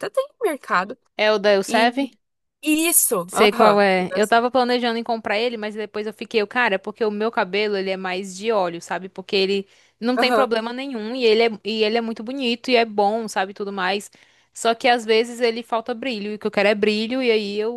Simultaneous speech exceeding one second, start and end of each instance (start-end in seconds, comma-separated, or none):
none